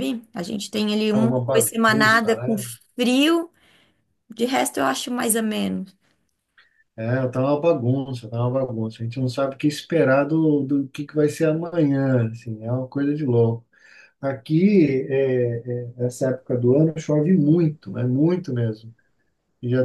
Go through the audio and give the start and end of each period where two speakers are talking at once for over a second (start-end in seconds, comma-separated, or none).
1.1-2.5